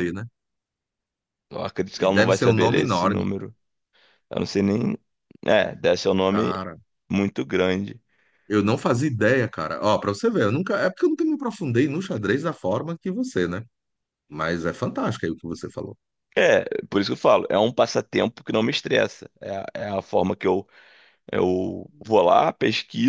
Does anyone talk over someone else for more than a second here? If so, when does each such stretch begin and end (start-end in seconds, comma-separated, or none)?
2.0-3.2